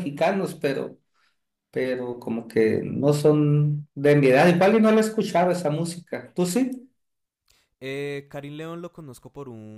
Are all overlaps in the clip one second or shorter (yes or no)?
yes